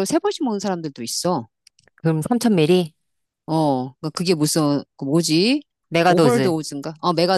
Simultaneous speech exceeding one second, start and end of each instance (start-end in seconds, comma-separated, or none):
none